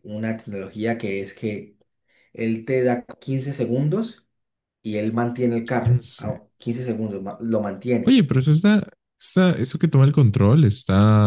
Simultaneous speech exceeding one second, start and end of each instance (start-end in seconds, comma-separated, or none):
none